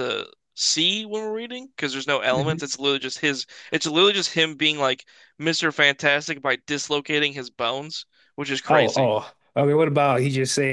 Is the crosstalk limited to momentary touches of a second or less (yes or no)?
yes